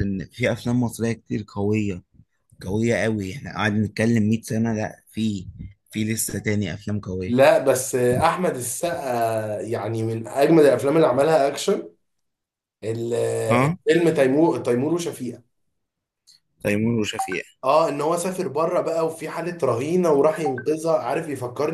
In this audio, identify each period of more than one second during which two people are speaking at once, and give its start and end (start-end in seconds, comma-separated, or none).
none